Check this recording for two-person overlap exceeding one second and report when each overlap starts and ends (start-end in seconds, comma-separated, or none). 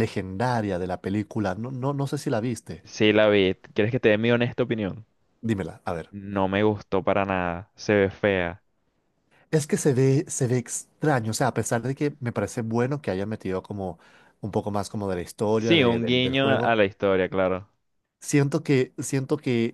15.6-16.8